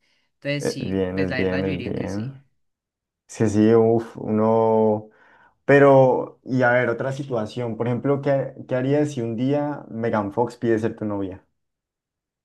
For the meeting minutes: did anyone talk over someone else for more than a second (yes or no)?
yes